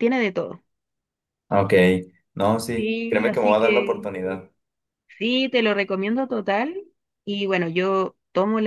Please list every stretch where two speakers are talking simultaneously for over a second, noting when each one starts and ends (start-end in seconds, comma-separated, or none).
2.8-4.1